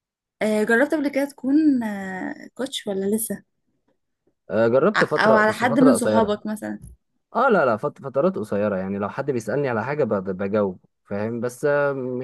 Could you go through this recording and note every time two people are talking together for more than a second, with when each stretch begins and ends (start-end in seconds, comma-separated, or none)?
5.0-6.4